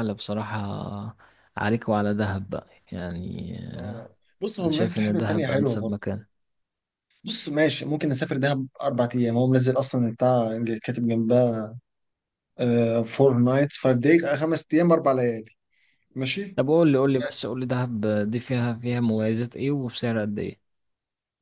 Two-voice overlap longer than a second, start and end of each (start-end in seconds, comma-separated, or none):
4.6-6.1